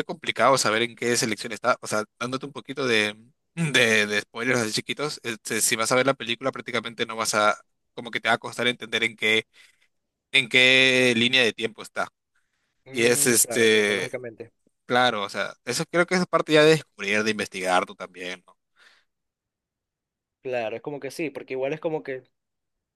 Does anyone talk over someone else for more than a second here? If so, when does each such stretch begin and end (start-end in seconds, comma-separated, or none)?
12.9-14.1